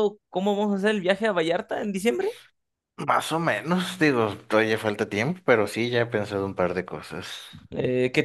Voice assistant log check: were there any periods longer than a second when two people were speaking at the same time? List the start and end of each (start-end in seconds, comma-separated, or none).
none